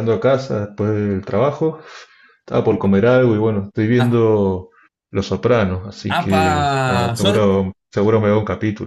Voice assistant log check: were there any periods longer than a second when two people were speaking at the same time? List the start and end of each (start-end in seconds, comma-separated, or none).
6.1-7.4